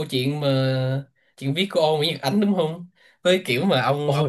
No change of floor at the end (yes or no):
yes